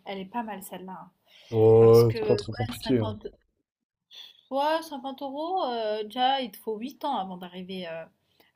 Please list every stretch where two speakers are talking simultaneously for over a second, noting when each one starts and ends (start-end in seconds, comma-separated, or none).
1.8-3.0